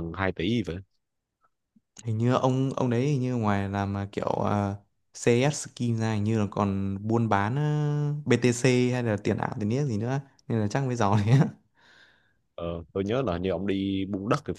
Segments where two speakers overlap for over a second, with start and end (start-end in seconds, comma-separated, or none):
none